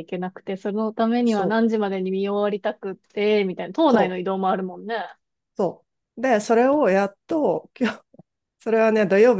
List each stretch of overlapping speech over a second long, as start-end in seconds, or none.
none